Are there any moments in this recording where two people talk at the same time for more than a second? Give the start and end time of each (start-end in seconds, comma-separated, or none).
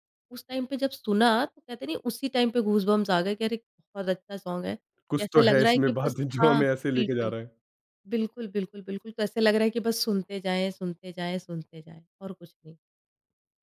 5.2-7.3